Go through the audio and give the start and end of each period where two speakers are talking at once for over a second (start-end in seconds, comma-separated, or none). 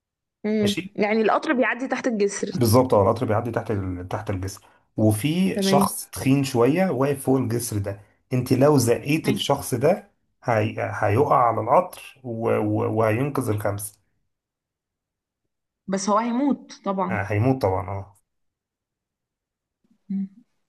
none